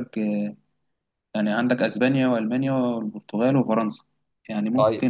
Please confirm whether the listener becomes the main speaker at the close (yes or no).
no